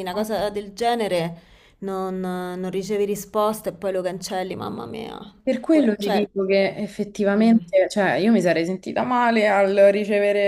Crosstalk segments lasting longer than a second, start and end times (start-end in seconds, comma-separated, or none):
none